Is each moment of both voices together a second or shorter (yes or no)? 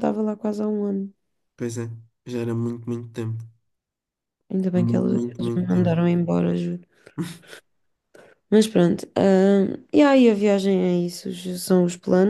no